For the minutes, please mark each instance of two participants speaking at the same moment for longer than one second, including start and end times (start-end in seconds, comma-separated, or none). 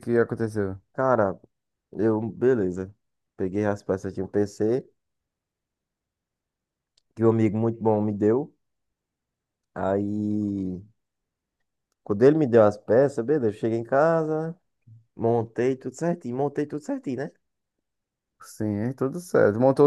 none